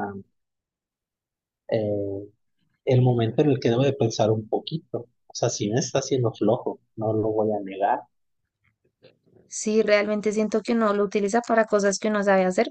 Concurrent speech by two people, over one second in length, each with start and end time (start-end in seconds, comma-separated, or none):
none